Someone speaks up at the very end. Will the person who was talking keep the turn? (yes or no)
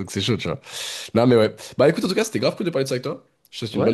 no